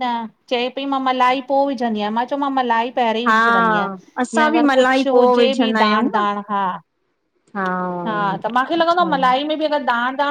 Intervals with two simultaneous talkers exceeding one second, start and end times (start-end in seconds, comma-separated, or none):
4.4-6.2